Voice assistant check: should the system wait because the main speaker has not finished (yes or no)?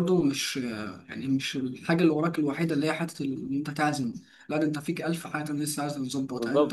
no